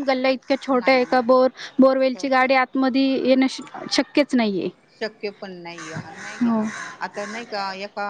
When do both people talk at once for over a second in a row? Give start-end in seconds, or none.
none